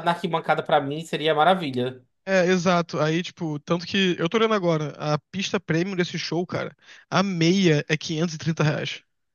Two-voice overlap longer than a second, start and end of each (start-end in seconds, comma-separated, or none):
none